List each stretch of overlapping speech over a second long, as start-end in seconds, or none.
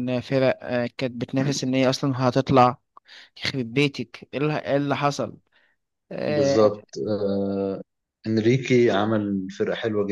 none